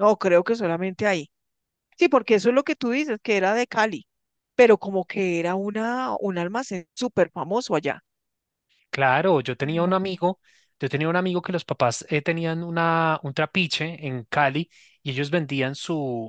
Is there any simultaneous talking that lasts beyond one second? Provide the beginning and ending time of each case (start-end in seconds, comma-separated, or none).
none